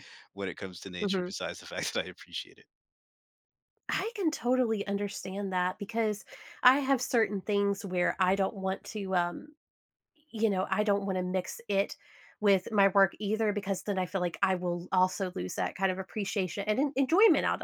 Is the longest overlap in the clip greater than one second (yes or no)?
no